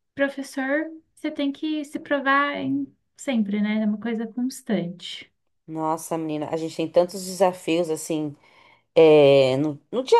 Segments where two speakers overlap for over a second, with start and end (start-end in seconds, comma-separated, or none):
none